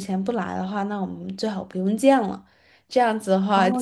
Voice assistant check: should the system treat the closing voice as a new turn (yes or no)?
yes